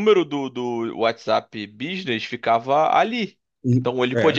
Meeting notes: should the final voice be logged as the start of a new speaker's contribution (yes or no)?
no